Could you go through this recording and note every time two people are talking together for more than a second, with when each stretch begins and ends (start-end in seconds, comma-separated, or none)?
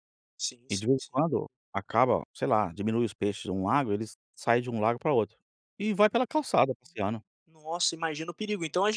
none